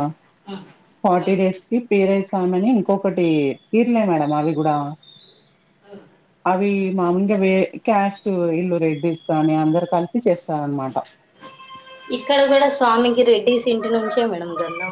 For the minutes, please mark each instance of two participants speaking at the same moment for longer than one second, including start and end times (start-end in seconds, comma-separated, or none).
none